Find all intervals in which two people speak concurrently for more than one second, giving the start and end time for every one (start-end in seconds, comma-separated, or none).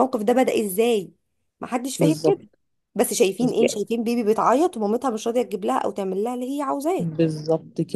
none